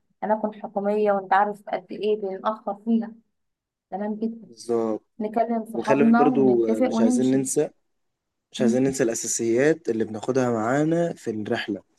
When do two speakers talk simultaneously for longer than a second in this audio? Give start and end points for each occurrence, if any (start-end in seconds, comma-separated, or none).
5.7-7.4